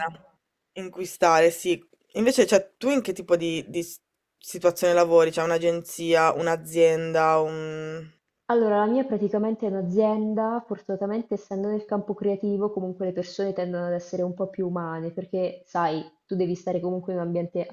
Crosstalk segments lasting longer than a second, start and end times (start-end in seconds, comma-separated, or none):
none